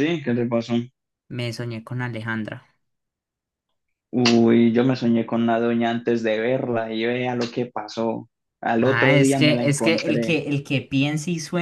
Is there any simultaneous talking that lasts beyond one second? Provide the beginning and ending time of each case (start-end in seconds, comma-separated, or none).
8.8-10.4